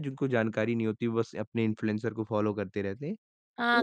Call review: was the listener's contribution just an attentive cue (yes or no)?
no